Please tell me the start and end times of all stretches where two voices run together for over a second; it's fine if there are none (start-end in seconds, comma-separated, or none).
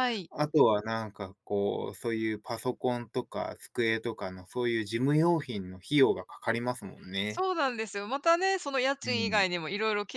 none